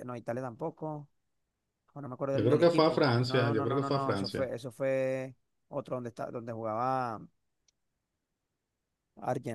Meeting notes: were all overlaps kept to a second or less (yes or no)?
no